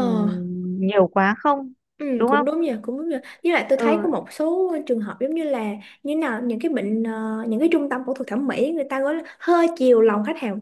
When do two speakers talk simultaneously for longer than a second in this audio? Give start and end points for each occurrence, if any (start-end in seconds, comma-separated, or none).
none